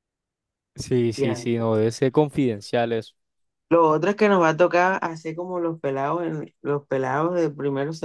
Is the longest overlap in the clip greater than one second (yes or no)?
no